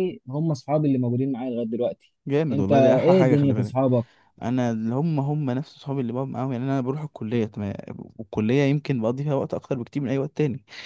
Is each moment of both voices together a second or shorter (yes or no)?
no